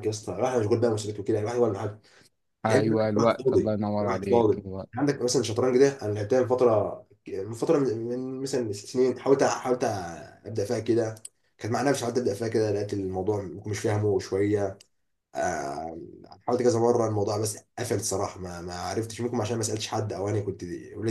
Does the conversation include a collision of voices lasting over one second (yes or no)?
yes